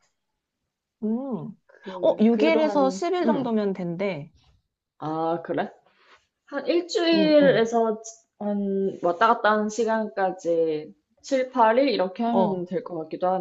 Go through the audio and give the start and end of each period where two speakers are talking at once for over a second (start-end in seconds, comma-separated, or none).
2.0-3.5